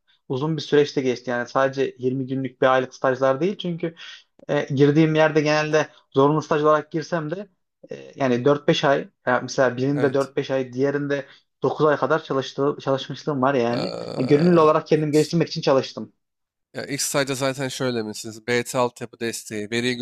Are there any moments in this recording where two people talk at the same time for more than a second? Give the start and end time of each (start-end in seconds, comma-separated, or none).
13.7-15.3